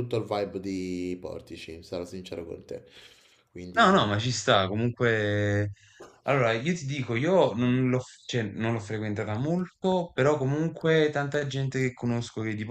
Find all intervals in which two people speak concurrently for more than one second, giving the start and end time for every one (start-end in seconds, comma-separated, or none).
none